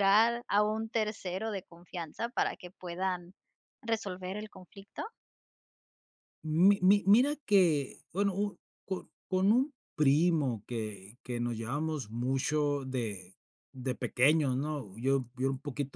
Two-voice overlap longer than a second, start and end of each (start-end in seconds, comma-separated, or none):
none